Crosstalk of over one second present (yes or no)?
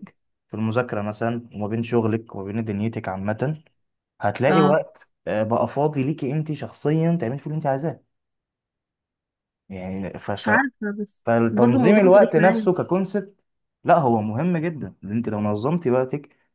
yes